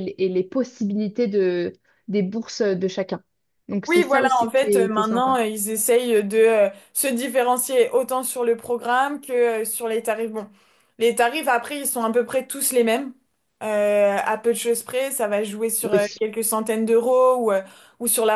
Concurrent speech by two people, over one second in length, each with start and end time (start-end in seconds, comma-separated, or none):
3.9-5.4